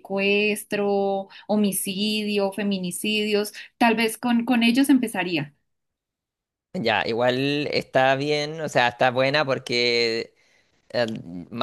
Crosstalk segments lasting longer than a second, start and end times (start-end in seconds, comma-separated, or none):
none